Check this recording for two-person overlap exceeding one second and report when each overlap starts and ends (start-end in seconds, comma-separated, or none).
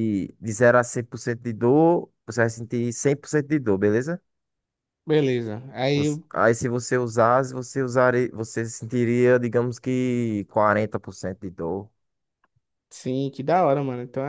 none